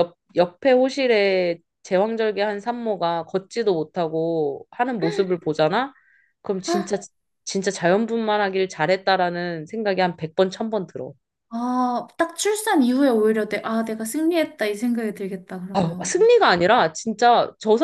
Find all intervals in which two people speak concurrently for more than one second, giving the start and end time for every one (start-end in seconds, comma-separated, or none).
none